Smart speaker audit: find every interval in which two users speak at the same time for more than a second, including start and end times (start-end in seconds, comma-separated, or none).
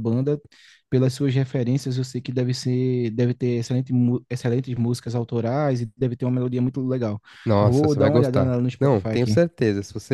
7.6-9.4